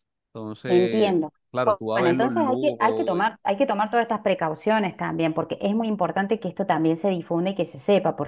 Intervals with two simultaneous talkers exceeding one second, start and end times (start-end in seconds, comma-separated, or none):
0.7-3.2